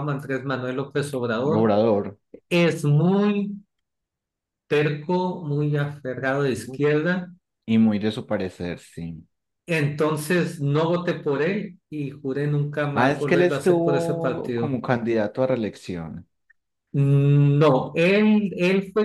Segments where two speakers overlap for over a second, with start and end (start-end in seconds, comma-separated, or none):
12.9-14.8